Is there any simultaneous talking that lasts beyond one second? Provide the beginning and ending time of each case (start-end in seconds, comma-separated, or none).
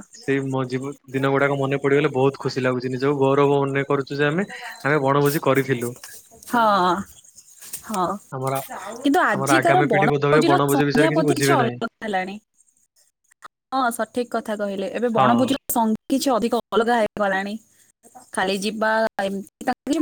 9.4-11.8